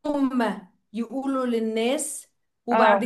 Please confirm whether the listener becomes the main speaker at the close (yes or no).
no